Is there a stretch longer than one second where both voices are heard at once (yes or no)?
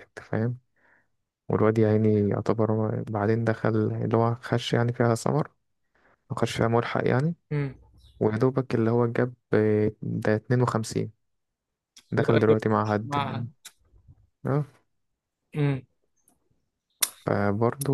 yes